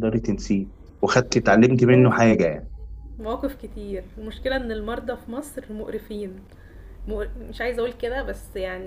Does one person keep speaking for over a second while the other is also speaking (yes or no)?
no